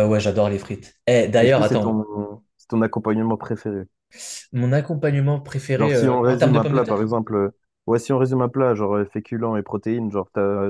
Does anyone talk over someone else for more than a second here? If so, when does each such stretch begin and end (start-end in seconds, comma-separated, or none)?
5.8-7.1